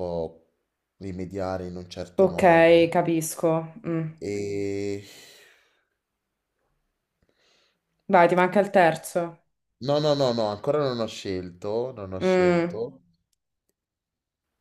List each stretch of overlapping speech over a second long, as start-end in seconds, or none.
none